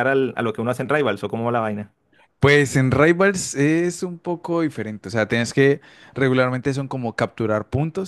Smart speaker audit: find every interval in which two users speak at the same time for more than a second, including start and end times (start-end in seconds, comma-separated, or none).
none